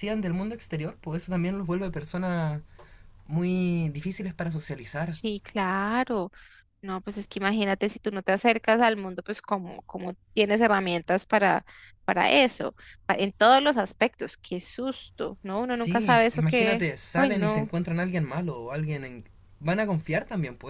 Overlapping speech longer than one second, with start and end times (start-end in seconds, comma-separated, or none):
15.7-17.7